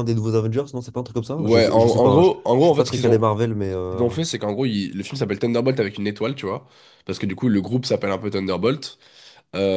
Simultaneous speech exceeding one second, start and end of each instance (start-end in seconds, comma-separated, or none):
1.4-3.3